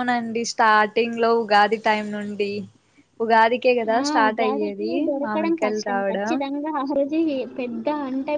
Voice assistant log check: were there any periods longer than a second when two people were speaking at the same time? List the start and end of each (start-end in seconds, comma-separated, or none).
4.0-6.3